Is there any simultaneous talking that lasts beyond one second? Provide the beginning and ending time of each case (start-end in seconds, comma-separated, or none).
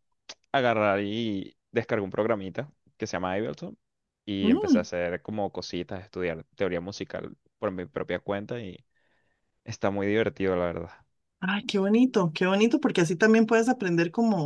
none